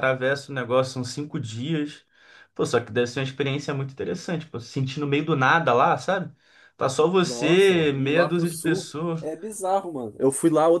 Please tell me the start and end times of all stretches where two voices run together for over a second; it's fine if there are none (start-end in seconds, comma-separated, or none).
7.2-9.3